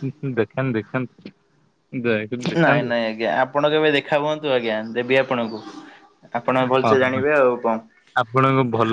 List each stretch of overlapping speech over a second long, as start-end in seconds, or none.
none